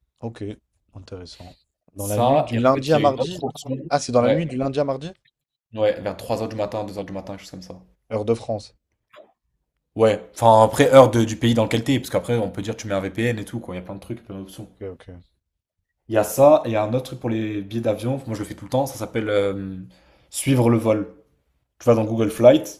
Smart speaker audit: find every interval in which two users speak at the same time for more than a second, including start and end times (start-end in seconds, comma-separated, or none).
2.0-3.4